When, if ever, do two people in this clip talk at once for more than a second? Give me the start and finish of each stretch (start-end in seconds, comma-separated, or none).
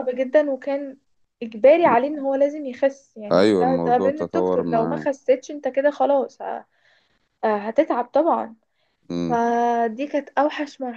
3.3-5.1